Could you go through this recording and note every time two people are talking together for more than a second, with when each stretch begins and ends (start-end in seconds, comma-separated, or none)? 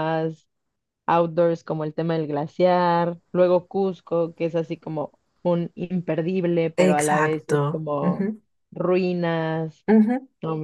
6.8-8.3